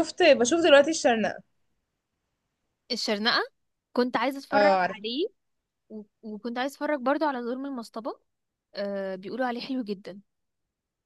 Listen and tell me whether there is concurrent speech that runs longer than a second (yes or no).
no